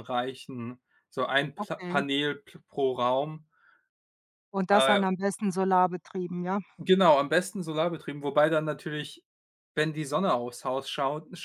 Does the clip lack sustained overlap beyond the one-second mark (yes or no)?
yes